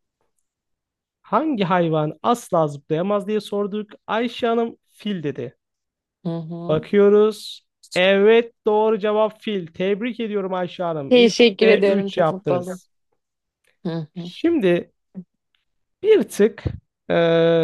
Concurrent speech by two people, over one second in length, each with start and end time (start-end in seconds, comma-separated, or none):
11.1-12.8